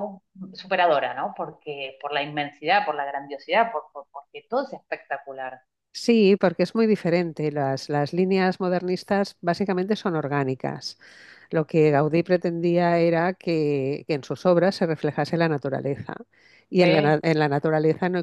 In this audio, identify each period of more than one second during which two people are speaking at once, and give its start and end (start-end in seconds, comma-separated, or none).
none